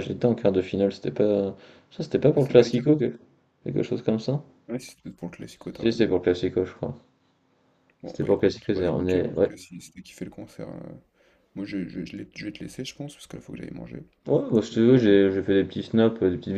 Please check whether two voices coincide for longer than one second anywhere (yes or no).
yes